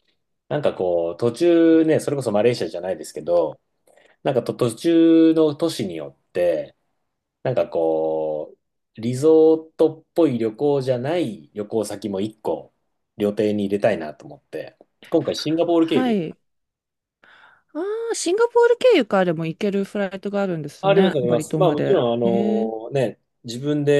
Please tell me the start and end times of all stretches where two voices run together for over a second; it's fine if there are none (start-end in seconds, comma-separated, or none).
20.8-22.7